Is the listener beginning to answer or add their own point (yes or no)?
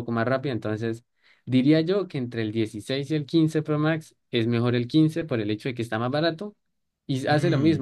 no